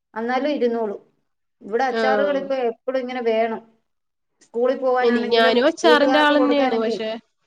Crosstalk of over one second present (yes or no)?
yes